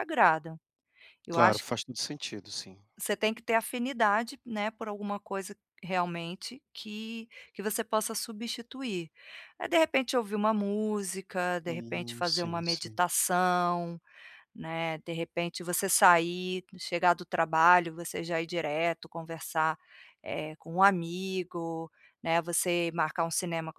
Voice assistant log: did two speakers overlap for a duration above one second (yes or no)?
yes